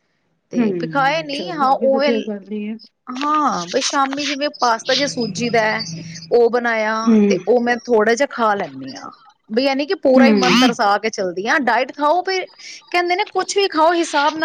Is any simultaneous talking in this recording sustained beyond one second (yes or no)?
yes